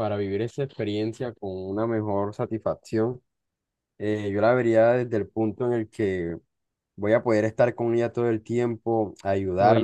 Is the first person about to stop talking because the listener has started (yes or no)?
no